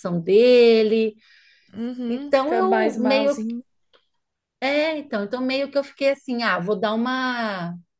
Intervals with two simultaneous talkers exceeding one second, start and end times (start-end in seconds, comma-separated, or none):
2.1-3.4